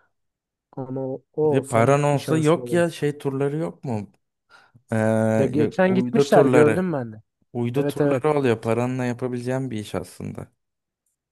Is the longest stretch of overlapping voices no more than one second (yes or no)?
no